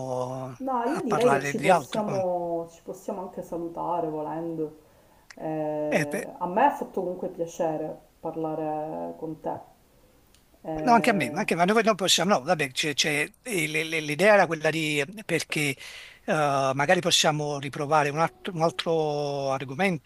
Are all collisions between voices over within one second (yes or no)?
no